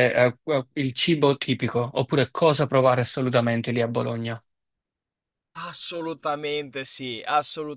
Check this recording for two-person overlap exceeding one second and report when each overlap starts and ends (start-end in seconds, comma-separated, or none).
none